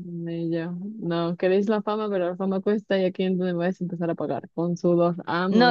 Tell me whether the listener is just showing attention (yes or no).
no